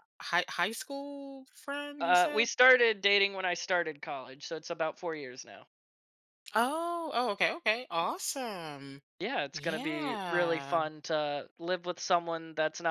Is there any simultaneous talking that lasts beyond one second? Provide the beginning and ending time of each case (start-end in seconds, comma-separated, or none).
9.5-10.8